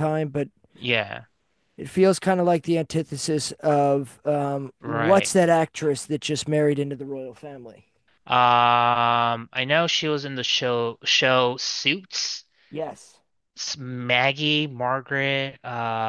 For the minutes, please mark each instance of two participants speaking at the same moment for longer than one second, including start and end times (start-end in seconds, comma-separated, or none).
none